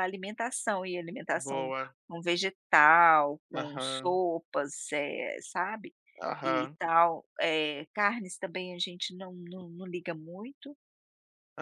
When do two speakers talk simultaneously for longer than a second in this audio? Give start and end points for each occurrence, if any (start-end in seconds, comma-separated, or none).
none